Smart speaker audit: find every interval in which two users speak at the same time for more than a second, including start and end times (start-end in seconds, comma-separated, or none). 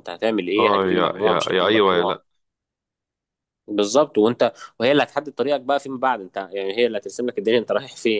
0.6-2.2